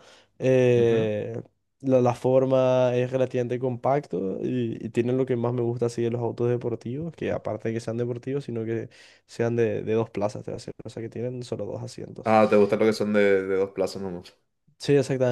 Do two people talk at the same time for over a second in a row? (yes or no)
no